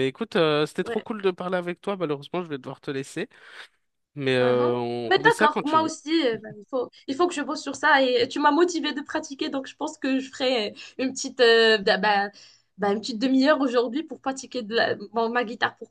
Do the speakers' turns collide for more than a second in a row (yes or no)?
yes